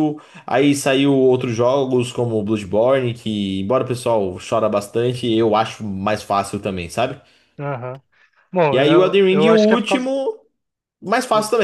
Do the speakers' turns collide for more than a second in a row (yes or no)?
yes